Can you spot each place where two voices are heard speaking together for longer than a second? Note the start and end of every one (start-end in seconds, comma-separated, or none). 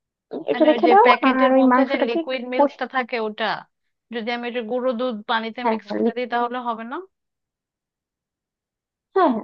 0.5-2.8